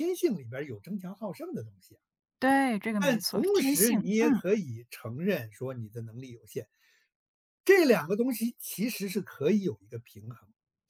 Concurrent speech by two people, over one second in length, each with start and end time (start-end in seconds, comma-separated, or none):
3.0-4.4